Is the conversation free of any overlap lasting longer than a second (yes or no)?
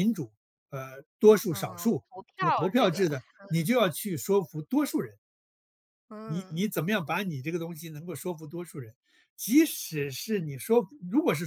no